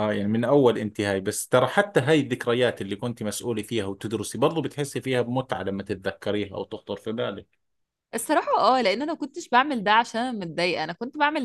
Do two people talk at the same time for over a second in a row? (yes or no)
no